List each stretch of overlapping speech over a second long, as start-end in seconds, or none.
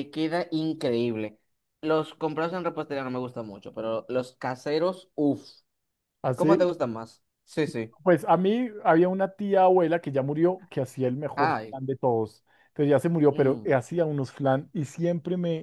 none